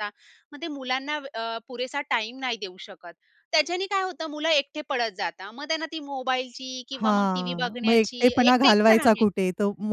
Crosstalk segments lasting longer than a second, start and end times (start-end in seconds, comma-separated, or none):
6.9-9.3